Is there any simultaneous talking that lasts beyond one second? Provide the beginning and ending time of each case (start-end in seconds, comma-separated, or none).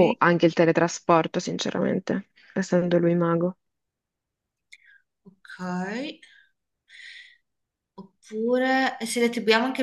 none